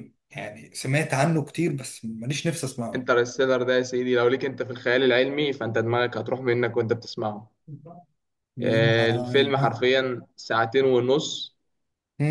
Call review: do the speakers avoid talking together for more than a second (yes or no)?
yes